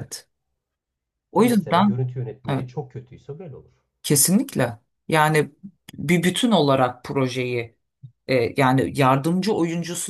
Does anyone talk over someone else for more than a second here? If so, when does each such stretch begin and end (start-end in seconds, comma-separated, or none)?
none